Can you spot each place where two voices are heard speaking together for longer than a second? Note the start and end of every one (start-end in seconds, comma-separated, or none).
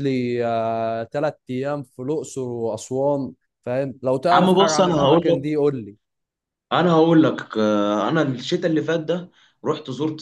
4.3-5.5